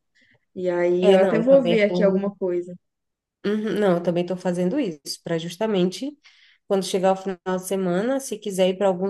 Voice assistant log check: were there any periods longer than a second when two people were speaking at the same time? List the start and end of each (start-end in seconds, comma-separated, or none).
1.0-2.3